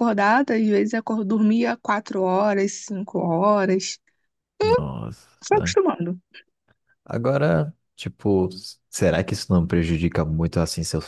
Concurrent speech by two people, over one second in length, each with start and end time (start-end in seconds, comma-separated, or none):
none